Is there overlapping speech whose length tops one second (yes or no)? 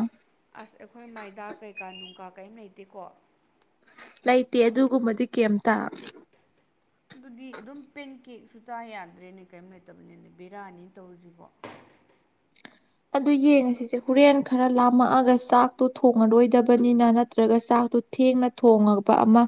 no